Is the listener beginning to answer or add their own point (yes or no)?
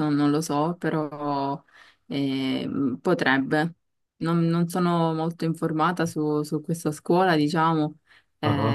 no